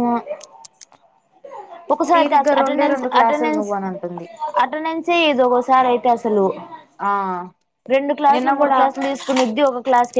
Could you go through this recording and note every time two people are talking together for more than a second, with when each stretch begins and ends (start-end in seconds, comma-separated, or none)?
2.1-3.7